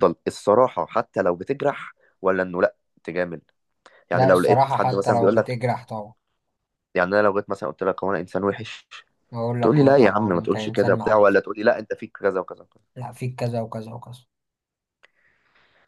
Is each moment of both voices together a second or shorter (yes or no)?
no